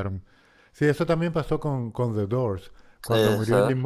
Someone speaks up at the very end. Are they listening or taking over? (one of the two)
listening